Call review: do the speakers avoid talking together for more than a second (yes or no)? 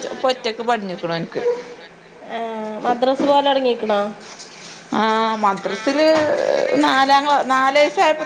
yes